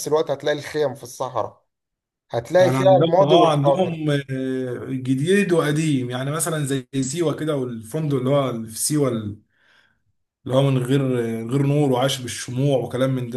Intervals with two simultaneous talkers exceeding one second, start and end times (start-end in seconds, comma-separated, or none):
2.6-4.0